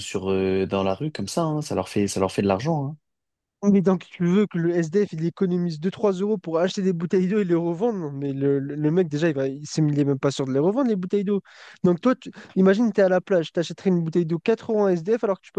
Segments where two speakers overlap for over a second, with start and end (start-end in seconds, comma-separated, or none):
none